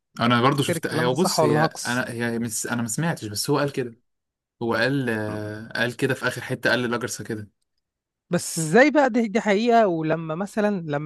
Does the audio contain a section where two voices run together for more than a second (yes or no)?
yes